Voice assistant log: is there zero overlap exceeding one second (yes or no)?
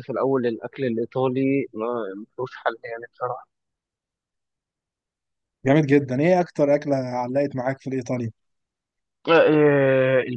yes